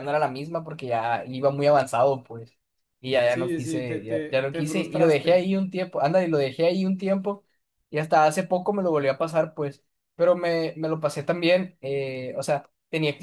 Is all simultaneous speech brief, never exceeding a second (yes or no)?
no